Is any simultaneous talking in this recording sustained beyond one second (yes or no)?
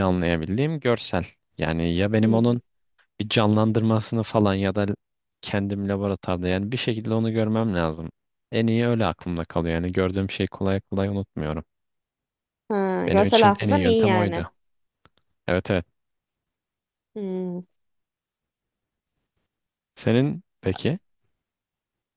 yes